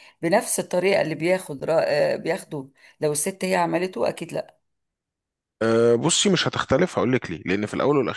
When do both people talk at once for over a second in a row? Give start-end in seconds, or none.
none